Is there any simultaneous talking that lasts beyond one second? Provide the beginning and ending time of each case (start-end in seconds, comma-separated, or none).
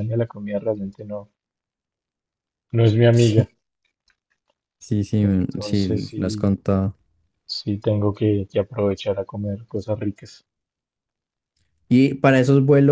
5.2-6.4